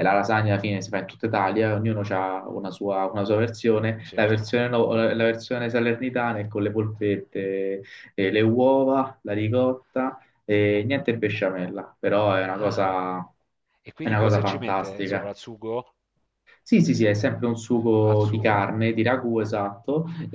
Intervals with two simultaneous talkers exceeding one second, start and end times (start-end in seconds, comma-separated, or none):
14.0-15.3